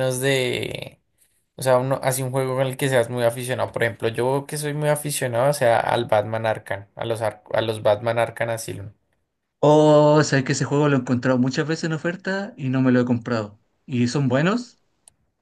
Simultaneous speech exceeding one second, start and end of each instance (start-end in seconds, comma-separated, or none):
none